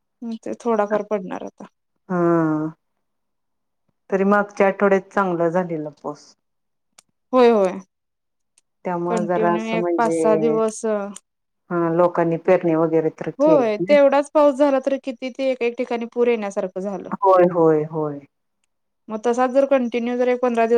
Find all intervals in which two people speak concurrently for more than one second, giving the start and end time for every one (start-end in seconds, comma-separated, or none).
9.1-10.6